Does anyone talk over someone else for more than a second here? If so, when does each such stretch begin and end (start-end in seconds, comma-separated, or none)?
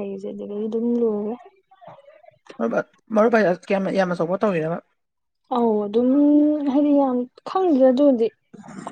none